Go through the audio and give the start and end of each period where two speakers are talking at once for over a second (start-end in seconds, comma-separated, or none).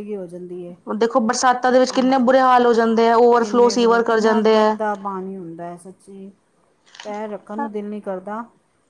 3.4-4.8